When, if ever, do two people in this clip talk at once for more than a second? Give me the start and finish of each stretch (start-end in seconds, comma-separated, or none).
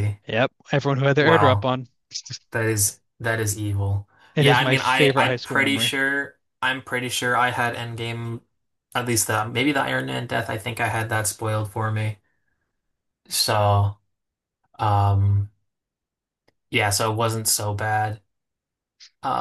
4.3-5.9